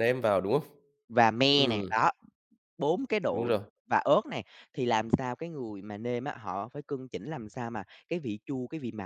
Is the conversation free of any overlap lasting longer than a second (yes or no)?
yes